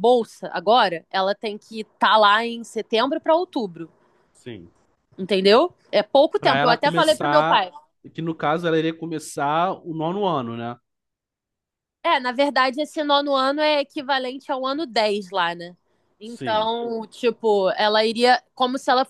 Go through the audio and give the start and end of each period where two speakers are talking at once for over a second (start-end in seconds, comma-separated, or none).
6.4-7.6